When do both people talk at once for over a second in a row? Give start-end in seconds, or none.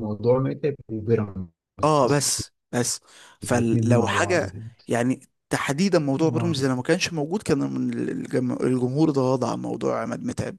3.4-4.6